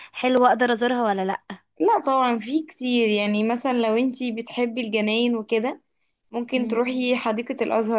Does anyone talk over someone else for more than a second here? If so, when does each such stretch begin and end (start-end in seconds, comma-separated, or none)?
none